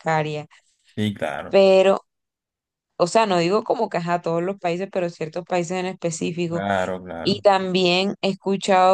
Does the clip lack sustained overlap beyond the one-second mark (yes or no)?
yes